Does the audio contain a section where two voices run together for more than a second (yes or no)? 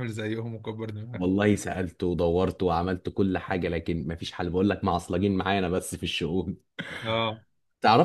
no